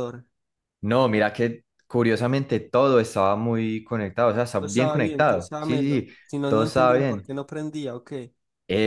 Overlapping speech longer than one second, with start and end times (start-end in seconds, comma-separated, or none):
4.6-7.3